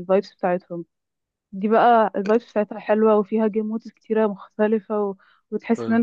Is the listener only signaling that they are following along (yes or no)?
yes